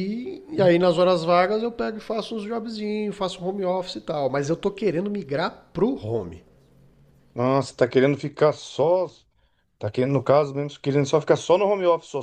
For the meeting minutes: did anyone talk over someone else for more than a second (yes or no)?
no